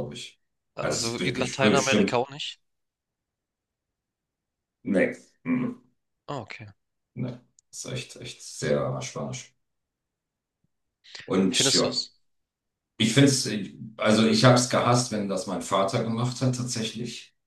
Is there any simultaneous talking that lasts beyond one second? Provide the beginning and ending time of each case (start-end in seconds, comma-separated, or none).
0.8-2.2